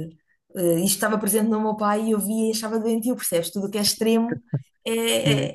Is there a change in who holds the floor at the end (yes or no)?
yes